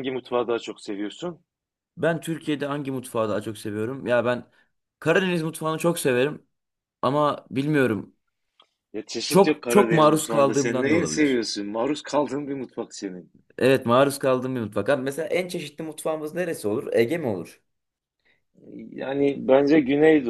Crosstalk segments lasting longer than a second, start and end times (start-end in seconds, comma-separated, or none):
9.3-11.4